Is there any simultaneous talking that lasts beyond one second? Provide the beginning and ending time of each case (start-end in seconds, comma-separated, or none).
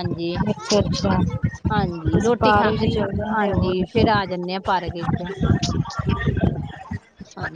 2.1-3.7